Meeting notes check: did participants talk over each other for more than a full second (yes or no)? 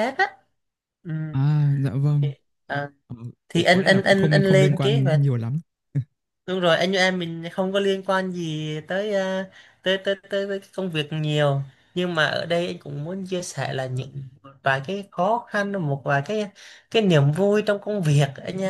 yes